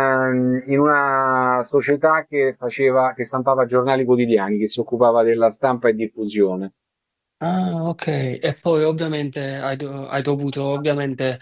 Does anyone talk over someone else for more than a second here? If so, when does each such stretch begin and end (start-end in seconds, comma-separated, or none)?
none